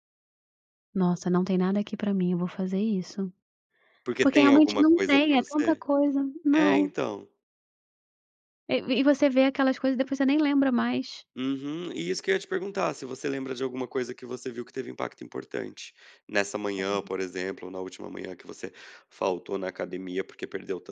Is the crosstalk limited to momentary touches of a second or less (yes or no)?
no